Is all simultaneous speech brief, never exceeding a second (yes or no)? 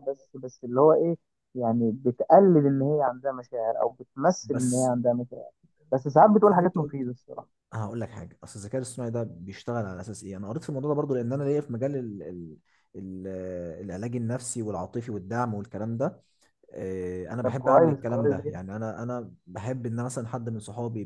no